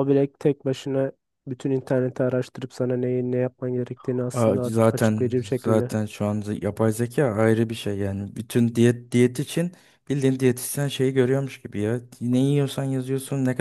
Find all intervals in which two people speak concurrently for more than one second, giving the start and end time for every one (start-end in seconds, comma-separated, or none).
4.3-5.9